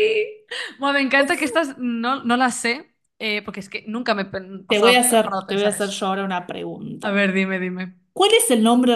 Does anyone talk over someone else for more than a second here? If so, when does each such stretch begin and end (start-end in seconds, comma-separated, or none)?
4.7-6.1